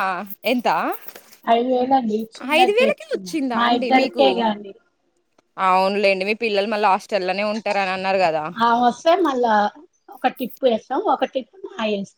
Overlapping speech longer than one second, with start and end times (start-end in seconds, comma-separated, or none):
2.6-4.3